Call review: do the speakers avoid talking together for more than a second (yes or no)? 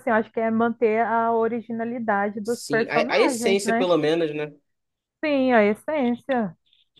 no